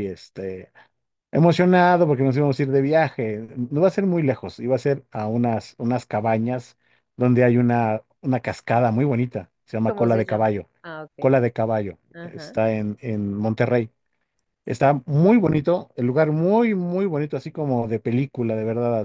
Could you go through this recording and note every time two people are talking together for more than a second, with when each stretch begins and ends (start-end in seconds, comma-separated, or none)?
none